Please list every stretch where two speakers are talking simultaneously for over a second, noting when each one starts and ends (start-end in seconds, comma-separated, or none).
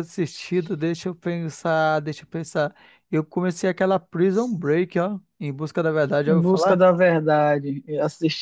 none